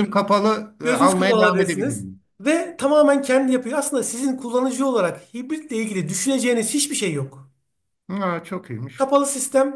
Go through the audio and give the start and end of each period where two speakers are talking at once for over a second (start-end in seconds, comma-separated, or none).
0.8-2.2